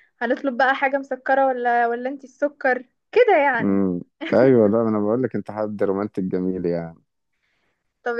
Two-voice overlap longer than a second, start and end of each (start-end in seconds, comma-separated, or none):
none